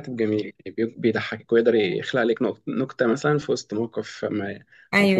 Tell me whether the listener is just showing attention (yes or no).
no